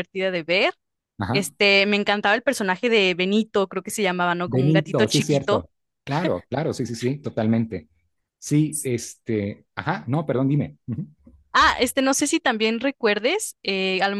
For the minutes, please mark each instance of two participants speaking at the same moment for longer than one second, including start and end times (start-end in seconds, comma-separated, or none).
4.4-5.7